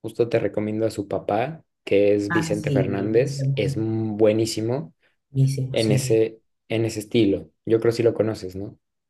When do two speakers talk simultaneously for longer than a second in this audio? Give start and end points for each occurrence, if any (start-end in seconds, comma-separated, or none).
2.3-3.8